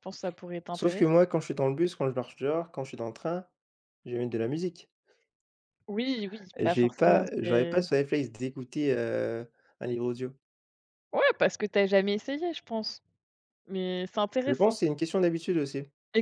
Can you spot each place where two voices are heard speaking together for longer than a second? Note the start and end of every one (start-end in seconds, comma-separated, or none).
6.6-7.8